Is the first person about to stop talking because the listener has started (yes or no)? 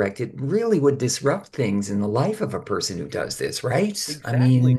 yes